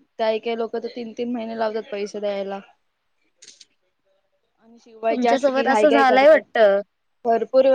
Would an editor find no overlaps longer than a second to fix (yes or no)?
no